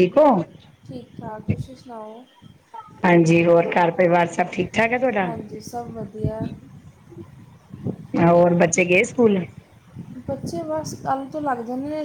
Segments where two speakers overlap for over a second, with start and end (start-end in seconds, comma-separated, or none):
none